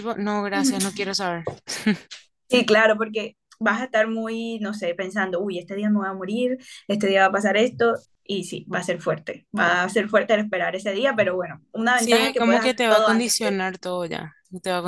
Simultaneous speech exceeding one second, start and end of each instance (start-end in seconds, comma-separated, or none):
11.9-13.6